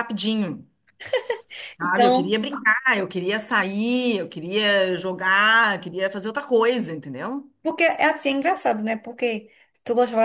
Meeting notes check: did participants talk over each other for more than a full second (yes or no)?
no